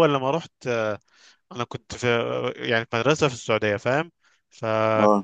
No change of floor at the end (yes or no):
yes